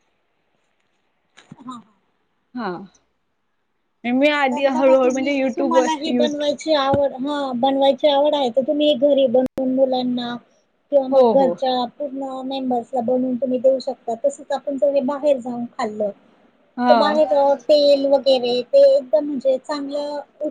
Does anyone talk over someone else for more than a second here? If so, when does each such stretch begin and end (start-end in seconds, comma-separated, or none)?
4.5-6.2